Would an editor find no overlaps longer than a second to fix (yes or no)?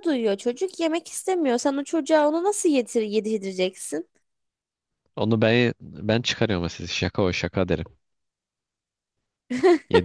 yes